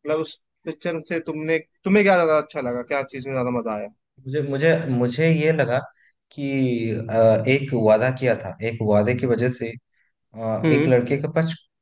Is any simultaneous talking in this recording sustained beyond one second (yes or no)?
no